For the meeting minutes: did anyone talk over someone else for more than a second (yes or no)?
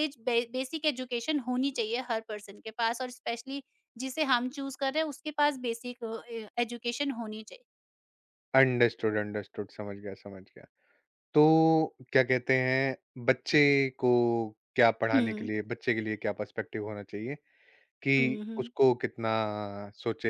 no